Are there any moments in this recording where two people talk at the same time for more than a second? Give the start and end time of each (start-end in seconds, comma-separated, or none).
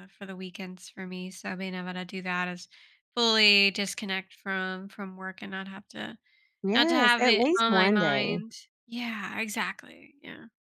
6.7-8.4